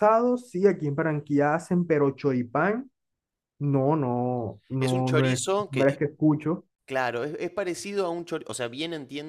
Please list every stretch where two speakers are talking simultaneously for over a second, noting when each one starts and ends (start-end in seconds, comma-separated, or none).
4.8-6.0